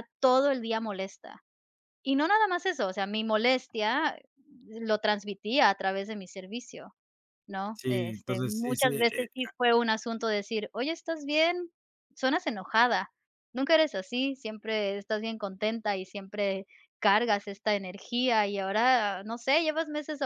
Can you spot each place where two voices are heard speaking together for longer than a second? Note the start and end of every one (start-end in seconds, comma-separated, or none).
7.7-9.3